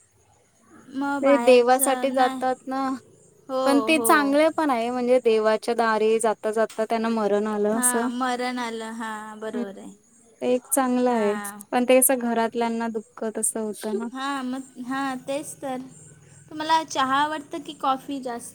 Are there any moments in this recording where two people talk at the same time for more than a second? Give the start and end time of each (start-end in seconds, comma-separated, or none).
1.2-2.4